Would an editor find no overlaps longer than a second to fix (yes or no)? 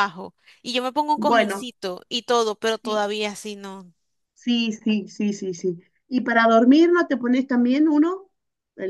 yes